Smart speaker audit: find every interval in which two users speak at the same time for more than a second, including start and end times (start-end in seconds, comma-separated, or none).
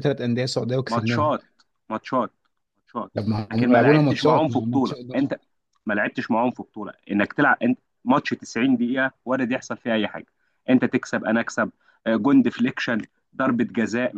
3.5-5.0